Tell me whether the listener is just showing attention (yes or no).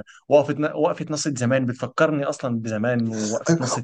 no